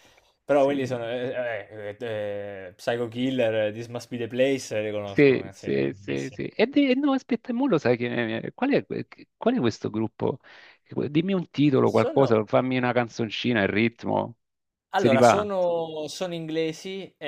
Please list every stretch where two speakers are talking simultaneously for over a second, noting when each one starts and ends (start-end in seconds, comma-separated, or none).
5.0-6.4